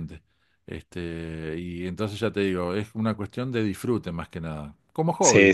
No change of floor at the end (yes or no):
no